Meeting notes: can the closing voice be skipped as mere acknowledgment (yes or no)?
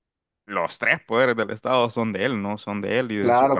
no